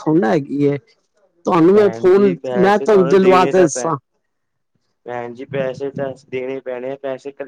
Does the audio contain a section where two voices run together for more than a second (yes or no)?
yes